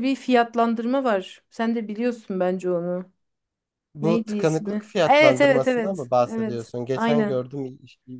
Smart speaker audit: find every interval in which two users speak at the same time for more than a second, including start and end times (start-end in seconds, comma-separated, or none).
4.0-7.4